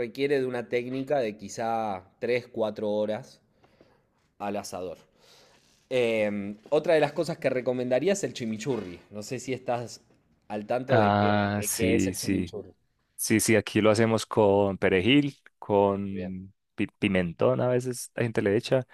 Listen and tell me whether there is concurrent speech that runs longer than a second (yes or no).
yes